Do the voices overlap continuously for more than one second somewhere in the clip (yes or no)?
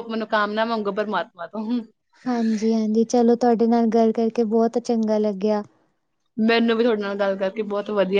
no